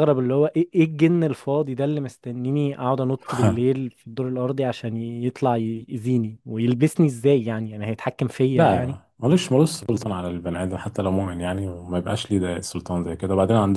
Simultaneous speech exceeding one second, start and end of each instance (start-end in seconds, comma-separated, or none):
none